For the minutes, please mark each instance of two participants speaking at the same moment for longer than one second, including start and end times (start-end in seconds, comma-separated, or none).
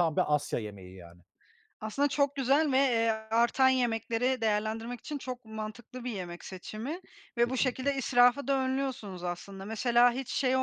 none